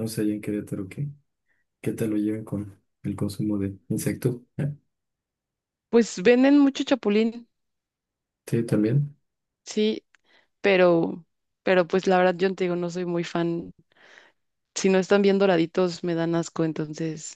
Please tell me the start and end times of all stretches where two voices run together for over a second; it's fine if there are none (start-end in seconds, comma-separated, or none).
none